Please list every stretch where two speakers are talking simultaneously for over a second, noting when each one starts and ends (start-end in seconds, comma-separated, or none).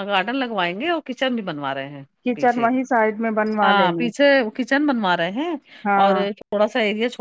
none